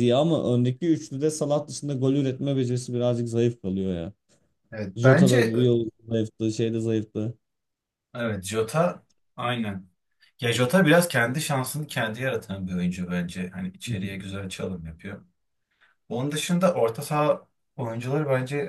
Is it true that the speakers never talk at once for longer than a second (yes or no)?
yes